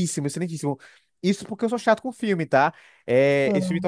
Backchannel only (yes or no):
yes